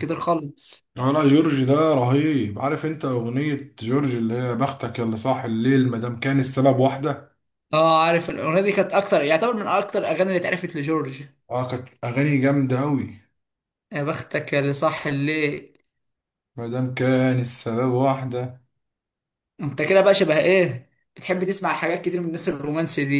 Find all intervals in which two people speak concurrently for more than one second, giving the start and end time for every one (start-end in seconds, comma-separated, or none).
none